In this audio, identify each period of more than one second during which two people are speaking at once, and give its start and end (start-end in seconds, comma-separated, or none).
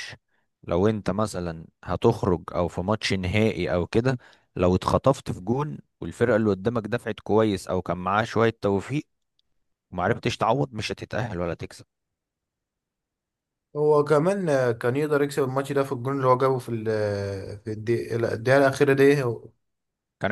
none